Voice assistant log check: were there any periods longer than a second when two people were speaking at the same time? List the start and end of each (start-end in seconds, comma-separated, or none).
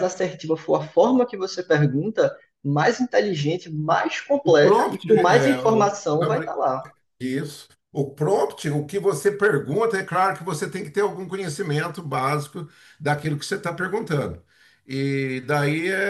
4.4-6.0